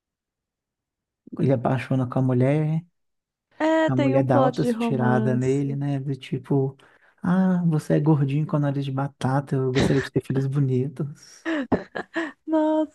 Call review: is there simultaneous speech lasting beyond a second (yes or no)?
yes